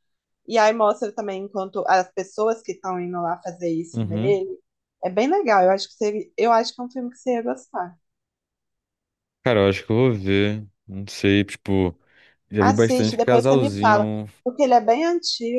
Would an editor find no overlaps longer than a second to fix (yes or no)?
no